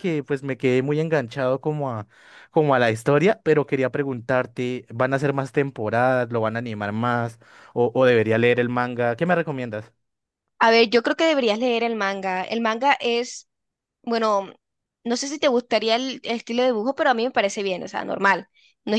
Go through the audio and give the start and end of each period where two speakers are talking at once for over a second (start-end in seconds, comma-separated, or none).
none